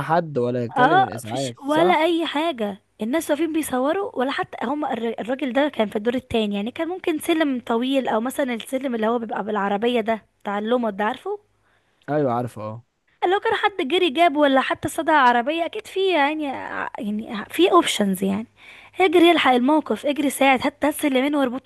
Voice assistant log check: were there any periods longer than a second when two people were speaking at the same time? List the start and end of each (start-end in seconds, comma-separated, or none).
0.8-2.0